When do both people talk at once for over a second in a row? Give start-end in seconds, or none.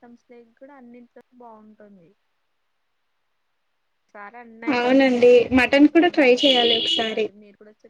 4.8-7.3